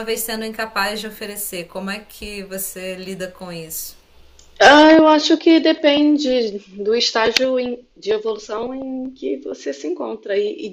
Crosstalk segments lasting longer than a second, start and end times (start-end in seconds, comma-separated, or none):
none